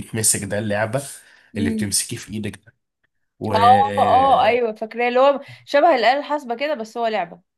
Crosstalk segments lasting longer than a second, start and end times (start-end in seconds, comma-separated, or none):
none